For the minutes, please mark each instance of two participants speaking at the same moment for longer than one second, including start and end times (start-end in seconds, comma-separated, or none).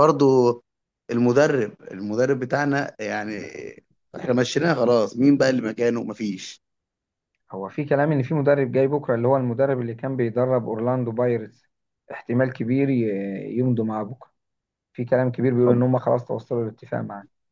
none